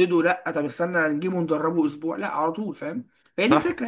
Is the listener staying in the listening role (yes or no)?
no